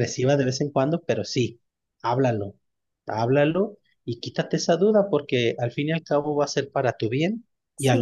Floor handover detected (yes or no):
no